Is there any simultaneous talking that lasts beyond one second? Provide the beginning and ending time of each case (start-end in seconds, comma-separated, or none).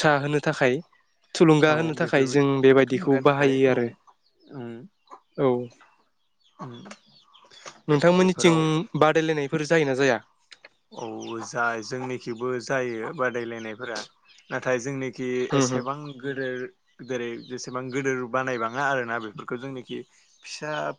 1.7-3.8